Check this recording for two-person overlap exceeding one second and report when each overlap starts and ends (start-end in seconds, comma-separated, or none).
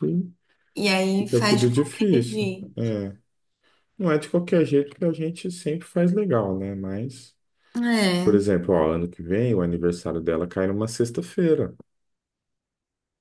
1.2-2.9